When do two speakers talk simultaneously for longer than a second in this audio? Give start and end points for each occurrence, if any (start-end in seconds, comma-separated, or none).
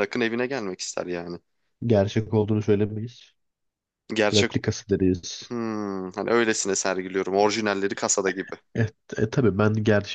none